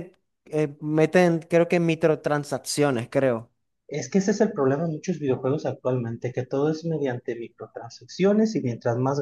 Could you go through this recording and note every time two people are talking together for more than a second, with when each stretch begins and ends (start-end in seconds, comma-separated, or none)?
none